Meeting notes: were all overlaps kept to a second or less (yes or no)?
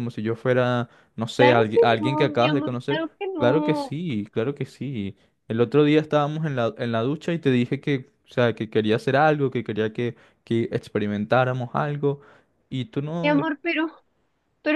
no